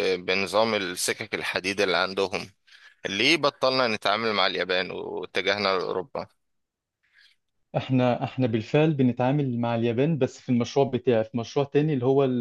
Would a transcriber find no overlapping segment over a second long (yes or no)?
yes